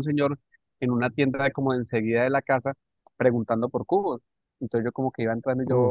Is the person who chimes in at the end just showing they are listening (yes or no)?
yes